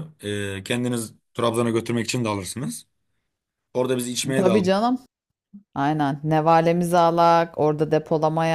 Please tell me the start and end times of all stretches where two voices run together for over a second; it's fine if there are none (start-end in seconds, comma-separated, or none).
none